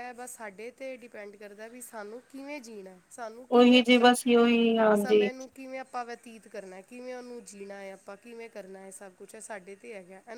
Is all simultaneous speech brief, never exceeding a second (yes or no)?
yes